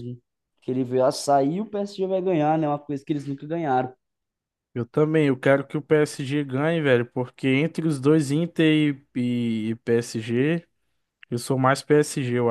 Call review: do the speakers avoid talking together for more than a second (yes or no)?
yes